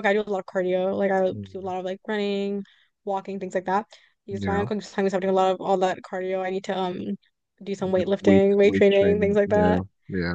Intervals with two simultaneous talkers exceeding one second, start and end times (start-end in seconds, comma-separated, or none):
7.8-9.8